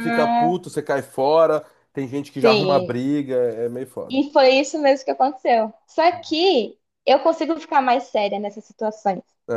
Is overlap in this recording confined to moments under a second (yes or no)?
yes